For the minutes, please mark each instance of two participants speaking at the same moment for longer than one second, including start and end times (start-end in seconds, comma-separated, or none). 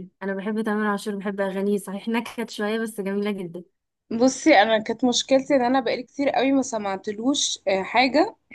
none